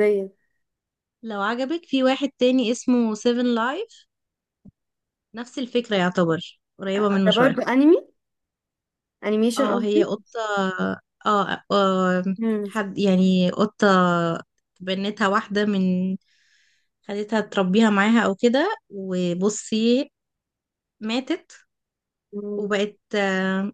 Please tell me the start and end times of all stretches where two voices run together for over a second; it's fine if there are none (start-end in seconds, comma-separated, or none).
none